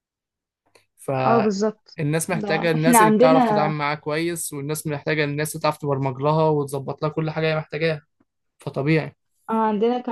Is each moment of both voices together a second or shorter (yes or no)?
no